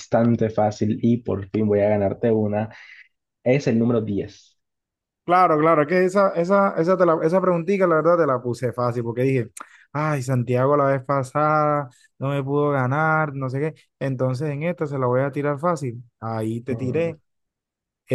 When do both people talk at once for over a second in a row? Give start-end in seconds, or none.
none